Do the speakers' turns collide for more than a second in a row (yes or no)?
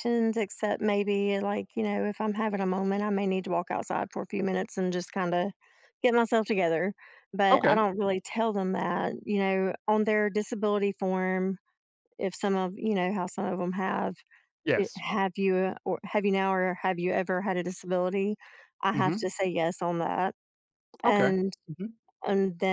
no